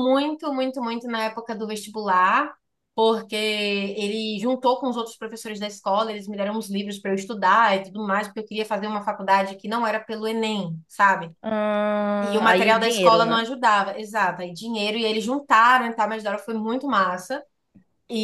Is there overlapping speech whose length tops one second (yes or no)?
yes